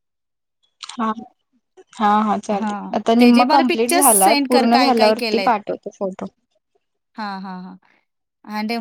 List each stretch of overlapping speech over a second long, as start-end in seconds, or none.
2.6-5.1